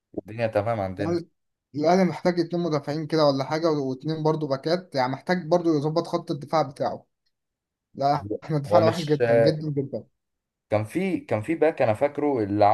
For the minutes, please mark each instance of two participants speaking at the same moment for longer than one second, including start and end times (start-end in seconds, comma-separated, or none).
none